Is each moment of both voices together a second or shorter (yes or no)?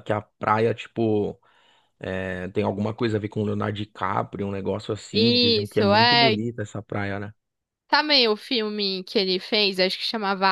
no